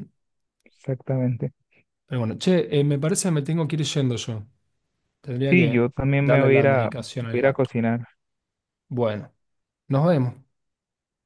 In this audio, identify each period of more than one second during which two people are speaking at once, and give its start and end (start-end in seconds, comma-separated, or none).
5.5-7.7